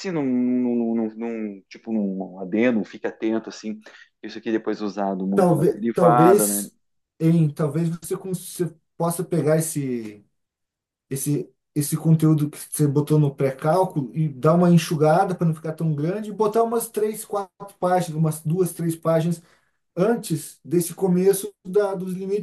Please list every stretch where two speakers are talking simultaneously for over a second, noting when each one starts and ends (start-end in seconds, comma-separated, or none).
5.3-6.7